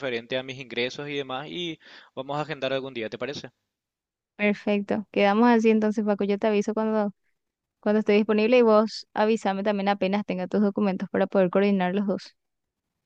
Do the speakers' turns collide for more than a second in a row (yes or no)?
no